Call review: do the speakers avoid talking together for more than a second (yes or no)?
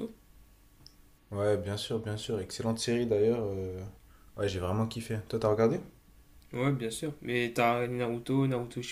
yes